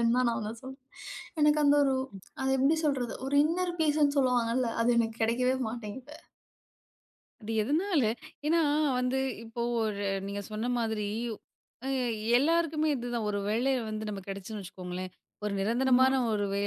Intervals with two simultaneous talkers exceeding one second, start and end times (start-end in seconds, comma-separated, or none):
none